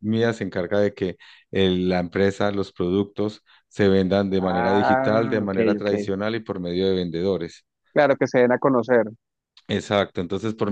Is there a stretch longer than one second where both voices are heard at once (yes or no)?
yes